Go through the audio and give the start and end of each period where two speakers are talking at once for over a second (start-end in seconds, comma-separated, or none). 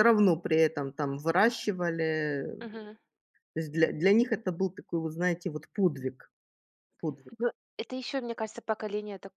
none